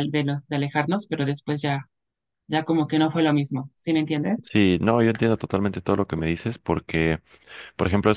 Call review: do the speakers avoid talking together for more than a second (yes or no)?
yes